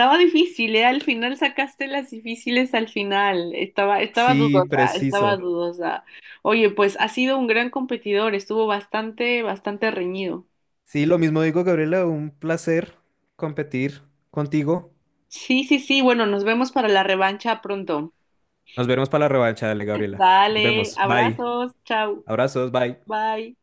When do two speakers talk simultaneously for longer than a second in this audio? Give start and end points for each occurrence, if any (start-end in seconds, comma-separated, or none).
4.1-5.4, 20.1-21.4